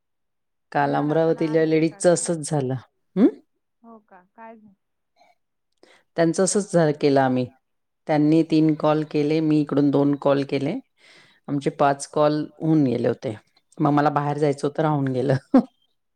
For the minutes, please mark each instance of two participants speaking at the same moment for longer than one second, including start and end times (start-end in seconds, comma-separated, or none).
0.8-2.2